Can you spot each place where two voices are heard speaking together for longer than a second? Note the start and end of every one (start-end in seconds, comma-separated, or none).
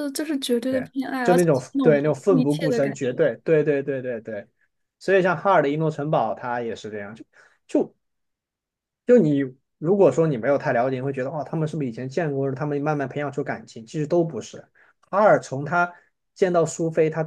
0.7-3.2